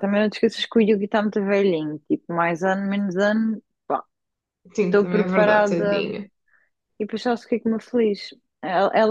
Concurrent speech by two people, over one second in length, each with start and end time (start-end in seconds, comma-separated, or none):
4.8-6.0